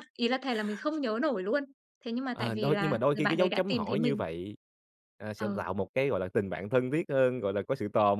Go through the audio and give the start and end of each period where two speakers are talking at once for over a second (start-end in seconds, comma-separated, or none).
2.3-4.2